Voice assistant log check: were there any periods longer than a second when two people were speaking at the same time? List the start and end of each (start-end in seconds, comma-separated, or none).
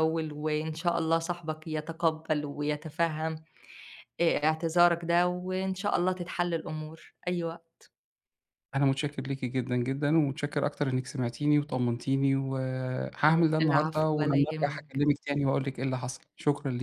13.6-15.1